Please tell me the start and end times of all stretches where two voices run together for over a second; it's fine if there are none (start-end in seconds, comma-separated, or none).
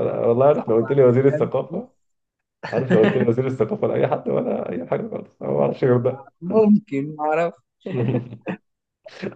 0.6-1.9